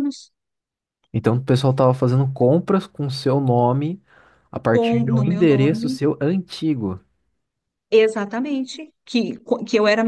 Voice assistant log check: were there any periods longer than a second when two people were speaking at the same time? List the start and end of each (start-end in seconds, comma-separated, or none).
4.7-6.0